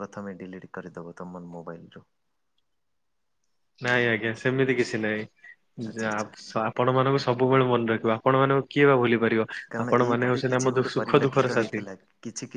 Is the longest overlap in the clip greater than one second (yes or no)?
yes